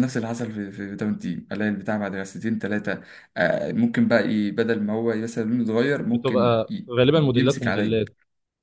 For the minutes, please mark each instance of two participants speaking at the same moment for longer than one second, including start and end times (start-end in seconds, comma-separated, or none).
6.0-8.0